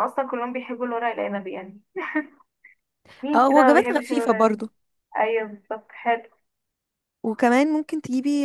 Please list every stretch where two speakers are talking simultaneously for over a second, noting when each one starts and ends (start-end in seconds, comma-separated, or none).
3.3-4.6